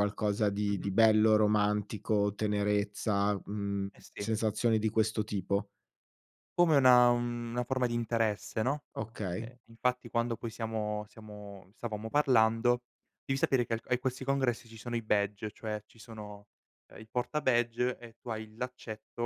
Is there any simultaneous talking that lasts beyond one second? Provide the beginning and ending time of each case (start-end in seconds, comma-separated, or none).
none